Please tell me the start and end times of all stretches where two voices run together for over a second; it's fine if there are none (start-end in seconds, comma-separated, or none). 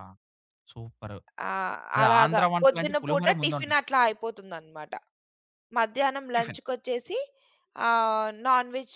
2.0-3.8